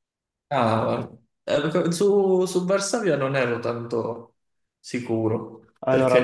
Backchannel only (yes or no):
yes